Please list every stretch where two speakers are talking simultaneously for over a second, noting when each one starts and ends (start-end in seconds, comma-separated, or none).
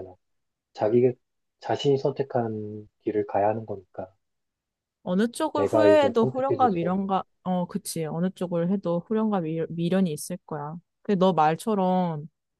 5.5-7.1